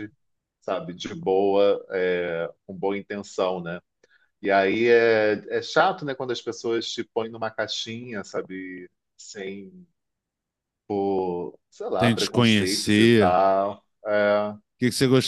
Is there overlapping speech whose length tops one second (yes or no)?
yes